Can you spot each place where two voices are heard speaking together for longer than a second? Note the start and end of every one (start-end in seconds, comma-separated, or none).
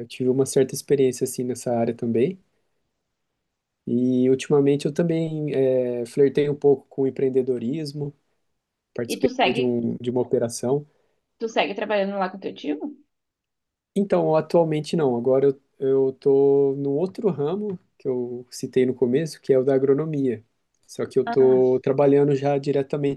none